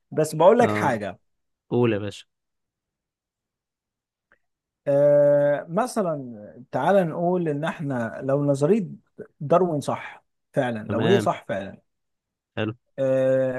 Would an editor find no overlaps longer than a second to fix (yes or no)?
yes